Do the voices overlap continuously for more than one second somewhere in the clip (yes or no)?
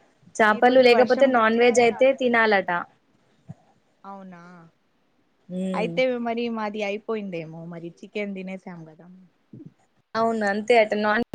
yes